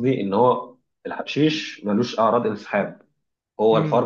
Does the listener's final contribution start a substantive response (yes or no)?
no